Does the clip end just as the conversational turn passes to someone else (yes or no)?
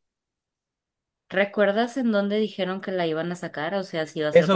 yes